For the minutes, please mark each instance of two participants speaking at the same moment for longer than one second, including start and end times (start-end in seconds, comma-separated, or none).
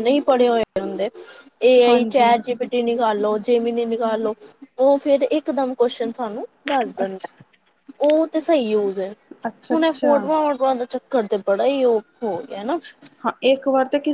none